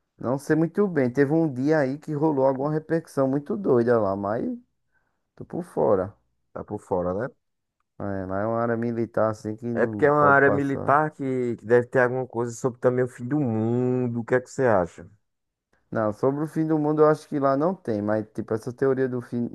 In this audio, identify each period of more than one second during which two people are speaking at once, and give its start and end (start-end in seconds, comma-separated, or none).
9.7-10.9